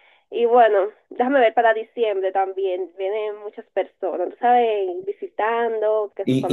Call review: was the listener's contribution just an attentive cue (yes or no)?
no